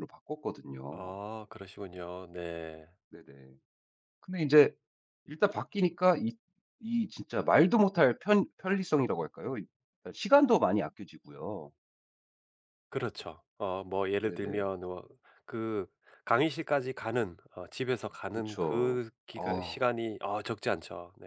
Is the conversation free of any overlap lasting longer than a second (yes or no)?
no